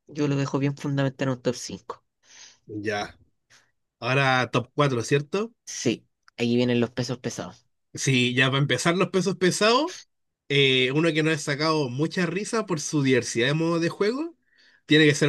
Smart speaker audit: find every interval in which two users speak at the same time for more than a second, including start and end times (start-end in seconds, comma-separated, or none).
none